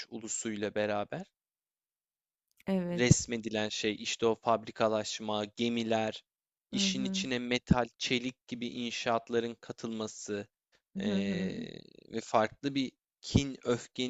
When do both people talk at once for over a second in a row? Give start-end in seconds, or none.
none